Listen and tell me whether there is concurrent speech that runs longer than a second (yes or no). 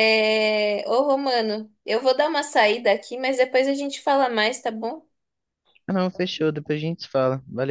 no